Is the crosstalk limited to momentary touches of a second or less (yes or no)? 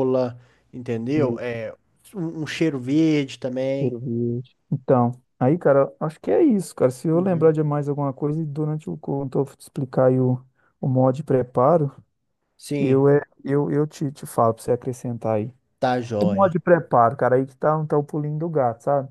yes